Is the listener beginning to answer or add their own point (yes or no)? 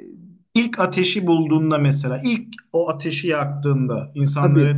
no